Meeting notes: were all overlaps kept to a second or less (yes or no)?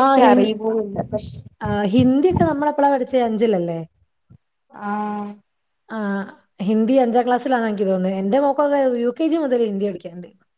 yes